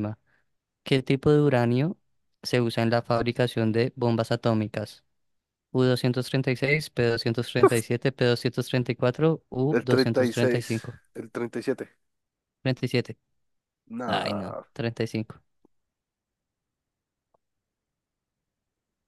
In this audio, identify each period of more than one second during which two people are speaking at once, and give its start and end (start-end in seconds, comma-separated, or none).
9.7-11.0